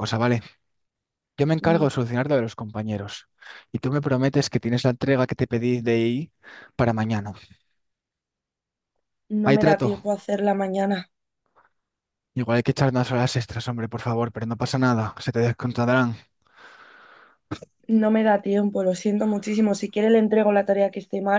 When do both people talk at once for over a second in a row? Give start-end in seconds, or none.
none